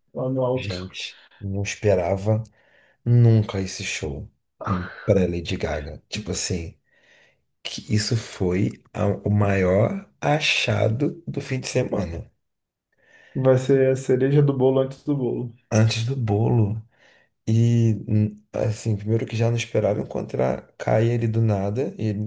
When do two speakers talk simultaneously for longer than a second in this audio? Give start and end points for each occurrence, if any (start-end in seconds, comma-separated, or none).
none